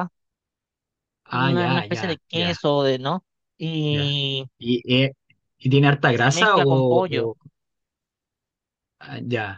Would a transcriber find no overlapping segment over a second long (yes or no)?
no